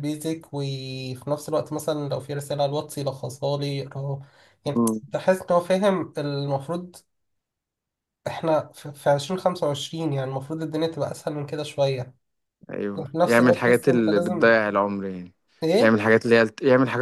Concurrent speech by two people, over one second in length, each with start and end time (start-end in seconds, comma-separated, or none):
12.9-14.6